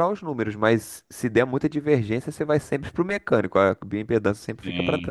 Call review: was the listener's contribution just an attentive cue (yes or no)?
no